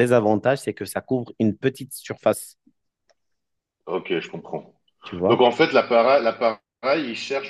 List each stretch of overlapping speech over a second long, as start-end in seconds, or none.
none